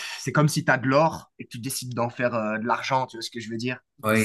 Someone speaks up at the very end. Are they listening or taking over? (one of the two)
taking over